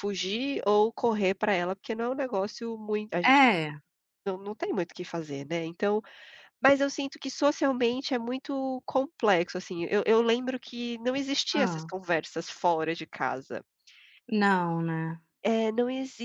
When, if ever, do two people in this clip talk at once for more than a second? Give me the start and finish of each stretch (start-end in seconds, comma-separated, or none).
none